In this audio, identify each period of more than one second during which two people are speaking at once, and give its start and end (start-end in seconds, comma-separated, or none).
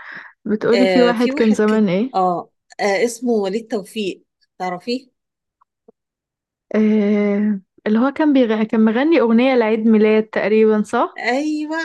0.7-2.1